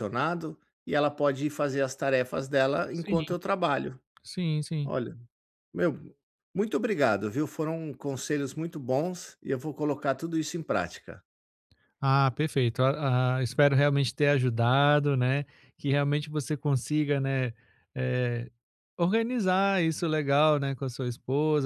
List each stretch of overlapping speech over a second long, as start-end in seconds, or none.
none